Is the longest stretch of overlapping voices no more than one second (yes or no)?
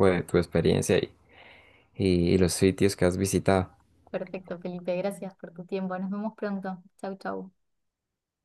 yes